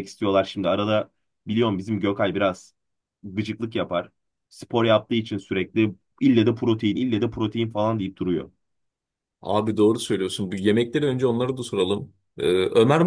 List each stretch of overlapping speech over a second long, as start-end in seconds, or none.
none